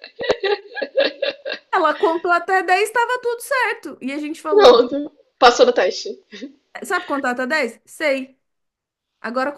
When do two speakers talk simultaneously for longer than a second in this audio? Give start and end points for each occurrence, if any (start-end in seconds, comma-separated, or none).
none